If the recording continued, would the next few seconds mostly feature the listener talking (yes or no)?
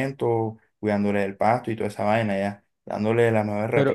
no